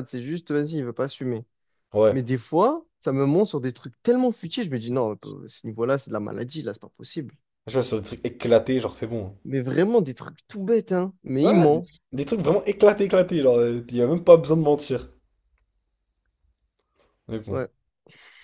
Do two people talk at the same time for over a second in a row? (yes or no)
no